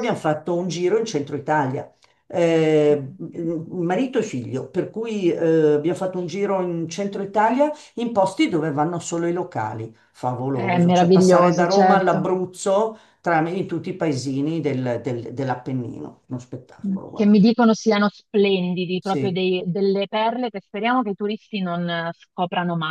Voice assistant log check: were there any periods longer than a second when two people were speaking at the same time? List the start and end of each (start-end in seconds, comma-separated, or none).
10.5-12.2